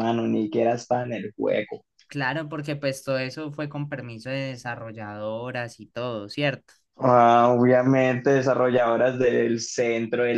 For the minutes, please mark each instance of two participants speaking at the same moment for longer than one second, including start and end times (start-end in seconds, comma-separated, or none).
none